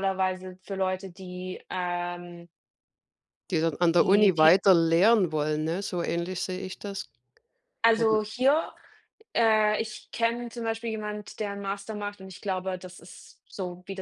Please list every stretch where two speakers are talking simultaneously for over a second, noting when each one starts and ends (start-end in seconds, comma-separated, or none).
none